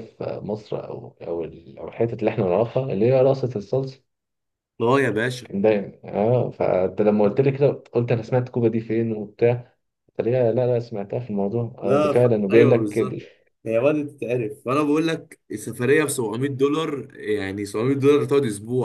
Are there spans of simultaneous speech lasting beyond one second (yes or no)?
yes